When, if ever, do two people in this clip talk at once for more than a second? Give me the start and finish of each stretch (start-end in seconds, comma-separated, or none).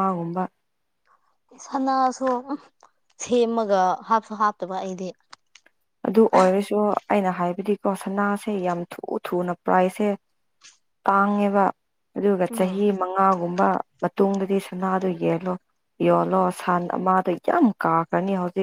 none